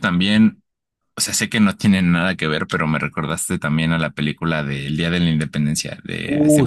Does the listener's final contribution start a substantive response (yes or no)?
yes